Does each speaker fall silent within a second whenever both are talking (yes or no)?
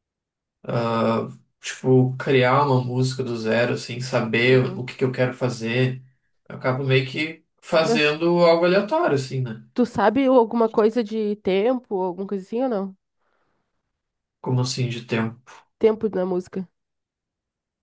yes